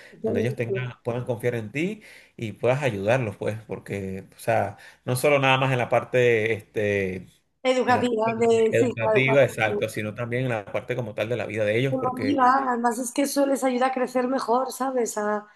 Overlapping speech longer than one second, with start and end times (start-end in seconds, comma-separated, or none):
7.9-9.4